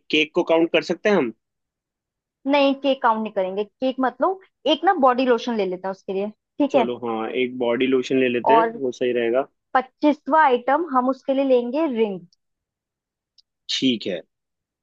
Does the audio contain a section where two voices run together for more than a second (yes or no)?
no